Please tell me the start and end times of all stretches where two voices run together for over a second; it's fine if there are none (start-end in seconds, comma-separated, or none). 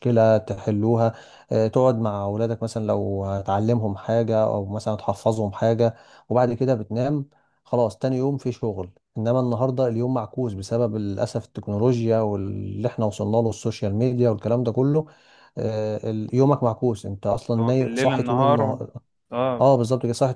17.5-18.8